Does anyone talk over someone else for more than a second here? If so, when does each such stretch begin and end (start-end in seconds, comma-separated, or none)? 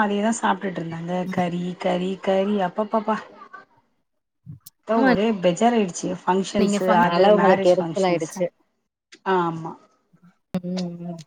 6.6-8.4